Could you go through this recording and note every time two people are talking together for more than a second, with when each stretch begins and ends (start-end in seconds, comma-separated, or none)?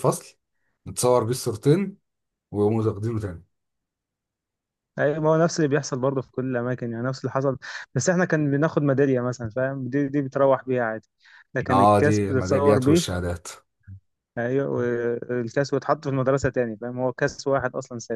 11.7-13.2